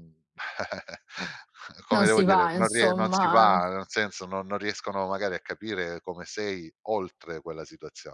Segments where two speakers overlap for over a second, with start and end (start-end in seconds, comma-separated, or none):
1.9-3.6